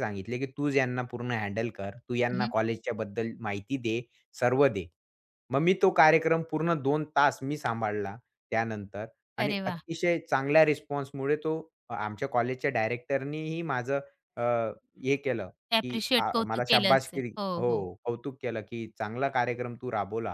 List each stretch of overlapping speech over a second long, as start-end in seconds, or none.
15.7-17.9